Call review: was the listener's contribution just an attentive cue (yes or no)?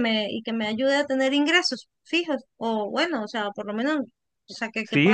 no